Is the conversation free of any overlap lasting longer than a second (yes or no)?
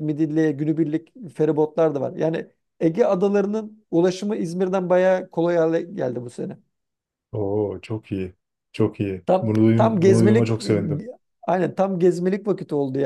no